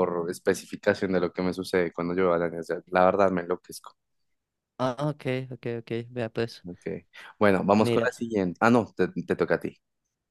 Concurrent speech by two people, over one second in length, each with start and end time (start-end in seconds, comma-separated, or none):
none